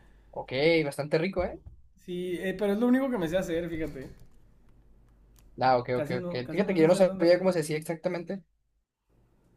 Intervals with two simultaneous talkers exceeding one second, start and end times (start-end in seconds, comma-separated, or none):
5.9-7.6